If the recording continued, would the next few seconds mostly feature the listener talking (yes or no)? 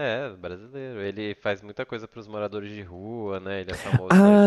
yes